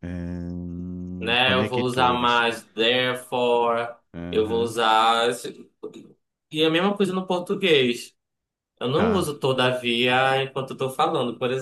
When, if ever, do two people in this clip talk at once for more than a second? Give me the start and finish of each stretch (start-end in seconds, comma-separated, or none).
1.2-2.5